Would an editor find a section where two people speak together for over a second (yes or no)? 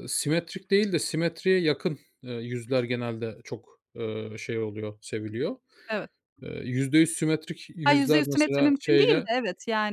yes